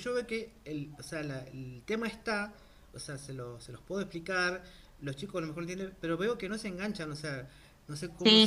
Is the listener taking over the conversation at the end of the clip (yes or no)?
yes